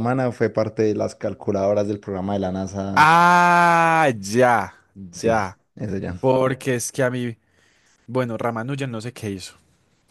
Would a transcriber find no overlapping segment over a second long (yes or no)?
yes